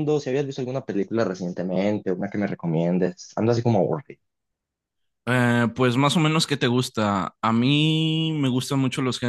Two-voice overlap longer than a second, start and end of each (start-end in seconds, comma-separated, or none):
none